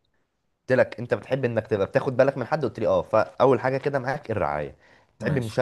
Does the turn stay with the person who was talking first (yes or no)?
yes